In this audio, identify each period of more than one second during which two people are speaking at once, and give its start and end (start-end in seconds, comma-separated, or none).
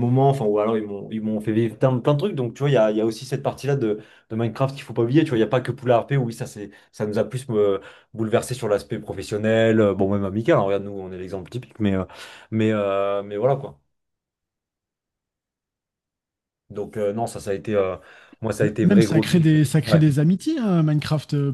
18.6-20.0